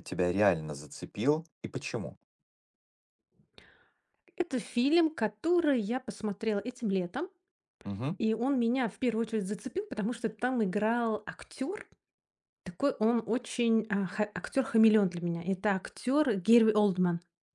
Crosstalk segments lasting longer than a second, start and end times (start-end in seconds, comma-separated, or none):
none